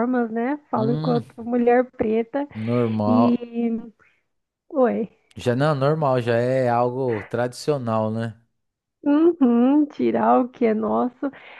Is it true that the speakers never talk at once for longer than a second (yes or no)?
yes